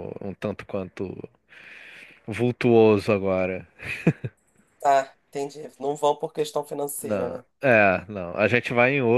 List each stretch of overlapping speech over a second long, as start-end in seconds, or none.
none